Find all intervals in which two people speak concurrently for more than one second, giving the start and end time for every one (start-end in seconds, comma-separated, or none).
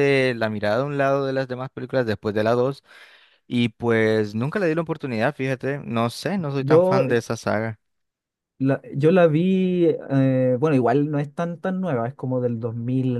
none